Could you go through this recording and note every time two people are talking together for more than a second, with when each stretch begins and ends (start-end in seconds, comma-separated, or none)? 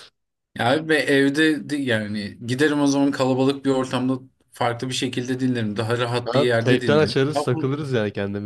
6.2-7.7